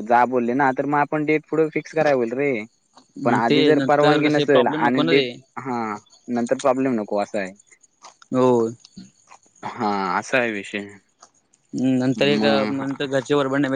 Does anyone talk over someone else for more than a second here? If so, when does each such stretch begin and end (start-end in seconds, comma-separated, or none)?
3.5-5.3